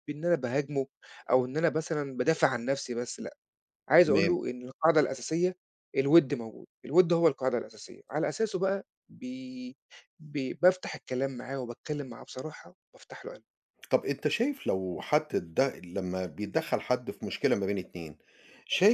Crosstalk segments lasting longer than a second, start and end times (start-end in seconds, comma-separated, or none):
none